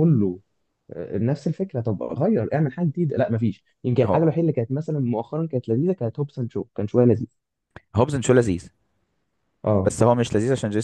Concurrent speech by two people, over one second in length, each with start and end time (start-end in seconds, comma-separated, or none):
none